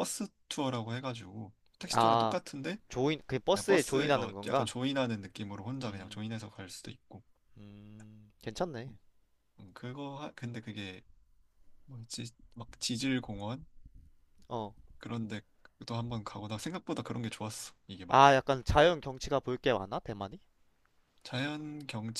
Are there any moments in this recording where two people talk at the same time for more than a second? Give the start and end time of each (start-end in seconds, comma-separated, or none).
3.5-4.8